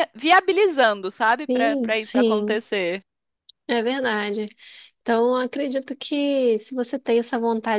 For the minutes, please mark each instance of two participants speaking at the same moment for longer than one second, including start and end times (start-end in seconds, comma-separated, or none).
1.4-2.6